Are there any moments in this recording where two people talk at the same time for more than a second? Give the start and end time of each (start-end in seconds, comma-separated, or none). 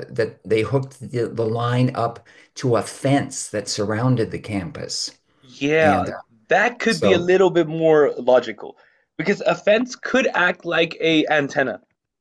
none